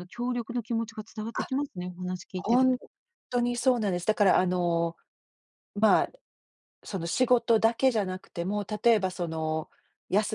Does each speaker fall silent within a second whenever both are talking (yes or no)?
yes